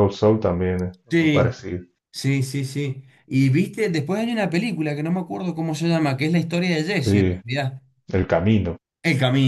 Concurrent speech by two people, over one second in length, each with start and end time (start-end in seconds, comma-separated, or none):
none